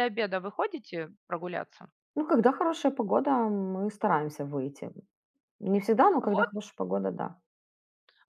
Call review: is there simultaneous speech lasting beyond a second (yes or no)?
no